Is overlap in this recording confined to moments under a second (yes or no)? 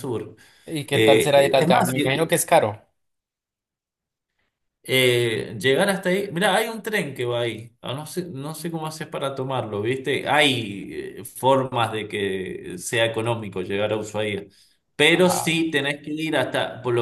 no